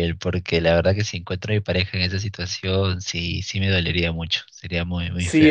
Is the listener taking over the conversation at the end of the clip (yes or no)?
yes